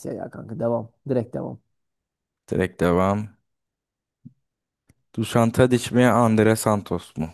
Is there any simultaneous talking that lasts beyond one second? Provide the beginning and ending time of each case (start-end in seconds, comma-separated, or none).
none